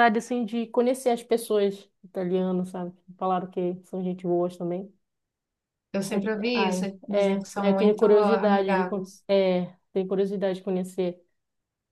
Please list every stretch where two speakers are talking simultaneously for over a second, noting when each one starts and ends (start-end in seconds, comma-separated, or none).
6.1-9.2